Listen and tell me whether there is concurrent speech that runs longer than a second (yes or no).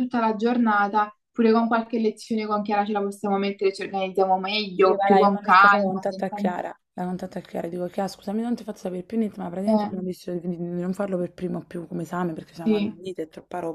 yes